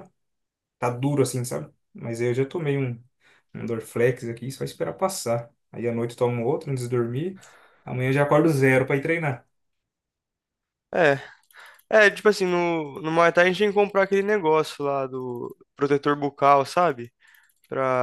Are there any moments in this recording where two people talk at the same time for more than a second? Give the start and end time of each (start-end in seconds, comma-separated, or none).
none